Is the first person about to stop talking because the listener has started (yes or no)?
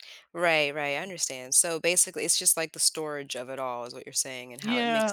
yes